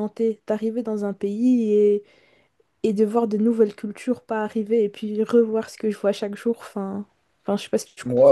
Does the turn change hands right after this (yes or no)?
yes